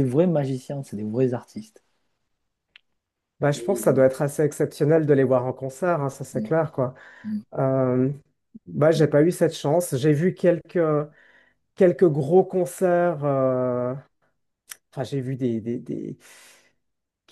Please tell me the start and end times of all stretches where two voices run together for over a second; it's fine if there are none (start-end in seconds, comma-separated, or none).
none